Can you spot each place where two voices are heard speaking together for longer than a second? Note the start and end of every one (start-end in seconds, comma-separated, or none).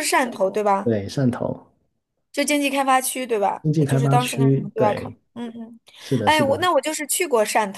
3.6-5.2